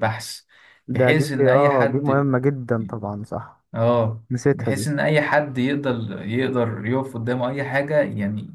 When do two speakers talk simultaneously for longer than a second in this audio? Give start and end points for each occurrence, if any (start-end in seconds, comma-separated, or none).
1.0-2.3